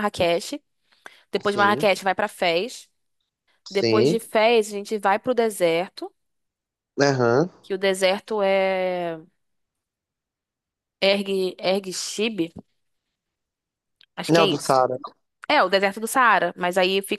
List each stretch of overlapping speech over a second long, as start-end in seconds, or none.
none